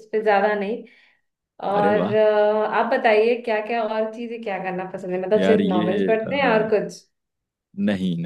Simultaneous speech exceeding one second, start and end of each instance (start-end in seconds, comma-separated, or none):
5.4-6.8